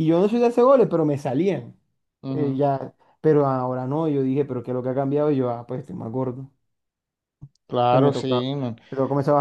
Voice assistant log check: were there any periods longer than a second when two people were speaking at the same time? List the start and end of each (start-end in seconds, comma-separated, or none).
none